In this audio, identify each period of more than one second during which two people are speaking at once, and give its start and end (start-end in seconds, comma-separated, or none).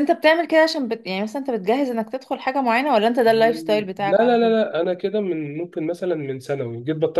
3.3-4.6